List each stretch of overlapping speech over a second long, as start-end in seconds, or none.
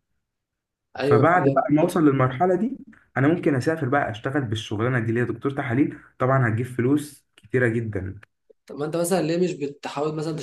none